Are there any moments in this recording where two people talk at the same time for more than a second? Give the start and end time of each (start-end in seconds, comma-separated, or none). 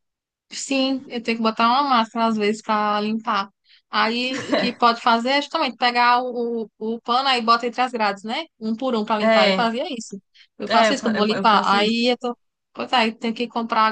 10.7-12.2